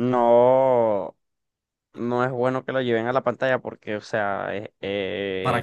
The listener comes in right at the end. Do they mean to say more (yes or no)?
no